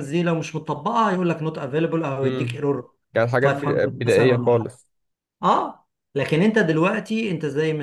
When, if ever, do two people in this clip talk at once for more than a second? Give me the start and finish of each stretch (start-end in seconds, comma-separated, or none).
3.4-4.7